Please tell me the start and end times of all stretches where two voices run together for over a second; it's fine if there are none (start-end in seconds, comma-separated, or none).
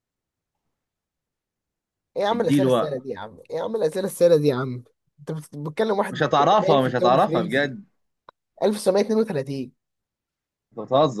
6.1-7.8